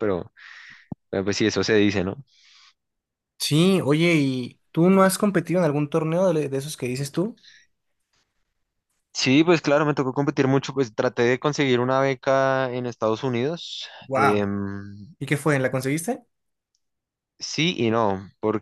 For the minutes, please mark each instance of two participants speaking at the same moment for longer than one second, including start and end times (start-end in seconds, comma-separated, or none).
none